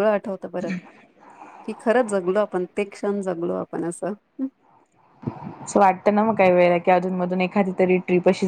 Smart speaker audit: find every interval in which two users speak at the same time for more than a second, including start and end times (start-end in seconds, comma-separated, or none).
none